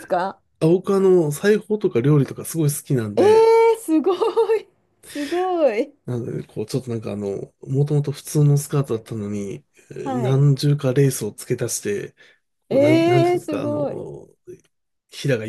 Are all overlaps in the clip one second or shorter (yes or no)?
no